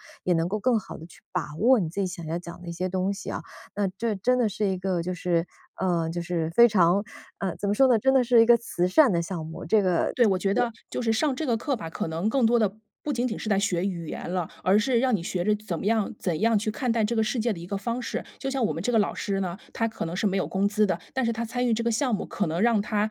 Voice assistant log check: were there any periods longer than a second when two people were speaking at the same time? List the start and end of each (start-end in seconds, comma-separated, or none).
none